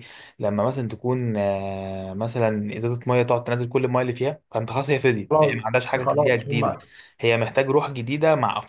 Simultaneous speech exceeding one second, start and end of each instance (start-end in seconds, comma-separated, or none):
5.3-6.8